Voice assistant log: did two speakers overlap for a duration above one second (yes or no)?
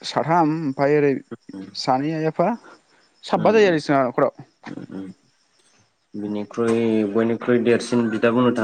no